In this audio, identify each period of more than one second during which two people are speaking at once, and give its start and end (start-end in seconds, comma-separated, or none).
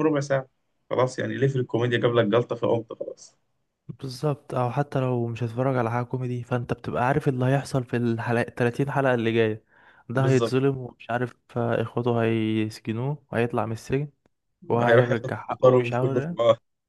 14.8-16.2